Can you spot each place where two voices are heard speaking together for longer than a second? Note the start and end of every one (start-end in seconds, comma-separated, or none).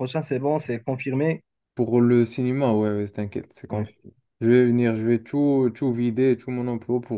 none